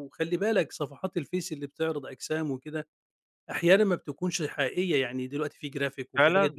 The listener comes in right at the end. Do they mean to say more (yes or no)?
no